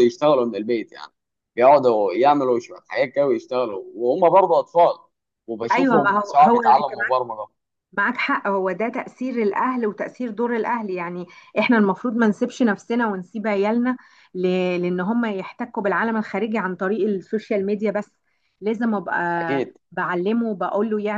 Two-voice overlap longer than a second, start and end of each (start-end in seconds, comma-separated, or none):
5.7-6.9